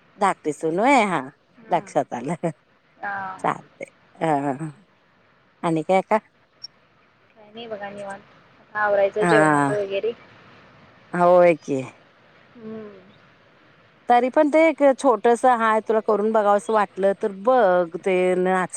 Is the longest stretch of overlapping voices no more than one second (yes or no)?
yes